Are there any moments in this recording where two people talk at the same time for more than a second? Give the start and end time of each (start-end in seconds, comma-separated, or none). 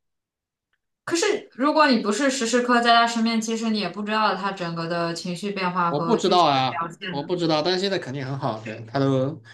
5.9-7.3